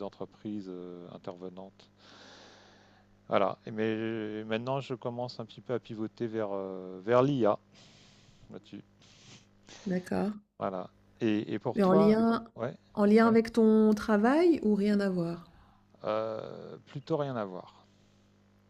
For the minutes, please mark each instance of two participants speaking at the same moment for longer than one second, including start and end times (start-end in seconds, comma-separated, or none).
none